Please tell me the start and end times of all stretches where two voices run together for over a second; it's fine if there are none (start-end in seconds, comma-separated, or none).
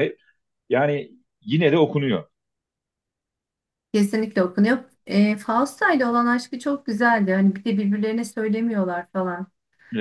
none